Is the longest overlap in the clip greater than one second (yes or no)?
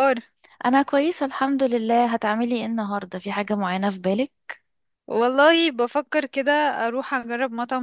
no